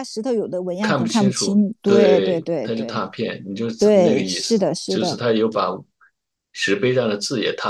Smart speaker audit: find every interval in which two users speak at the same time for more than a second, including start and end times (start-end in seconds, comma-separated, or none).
0.8-3.0, 3.8-5.2